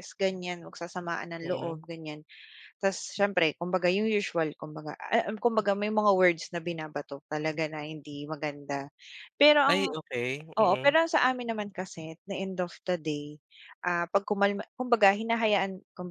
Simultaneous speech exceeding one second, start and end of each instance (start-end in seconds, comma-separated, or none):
none